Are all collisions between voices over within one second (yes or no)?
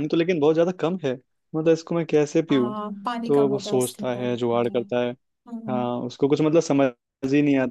no